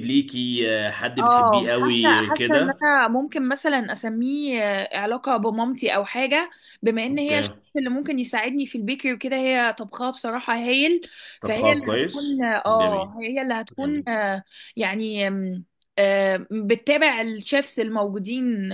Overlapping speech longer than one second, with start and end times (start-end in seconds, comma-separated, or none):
1.2-2.8, 11.4-13.1